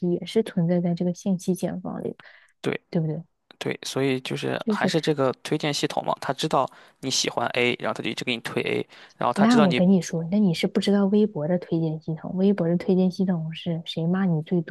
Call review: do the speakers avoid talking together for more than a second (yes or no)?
yes